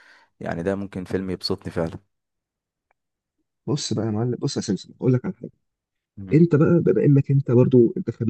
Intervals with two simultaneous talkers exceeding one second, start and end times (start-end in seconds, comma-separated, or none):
none